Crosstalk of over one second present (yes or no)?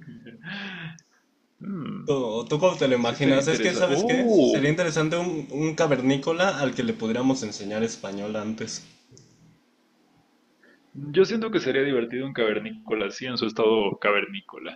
yes